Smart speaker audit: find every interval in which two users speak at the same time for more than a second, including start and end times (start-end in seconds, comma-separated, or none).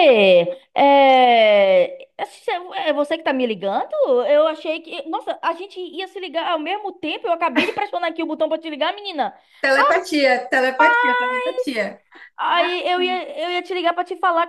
none